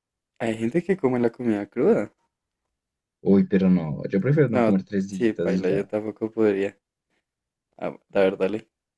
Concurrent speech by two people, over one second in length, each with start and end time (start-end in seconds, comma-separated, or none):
4.5-5.9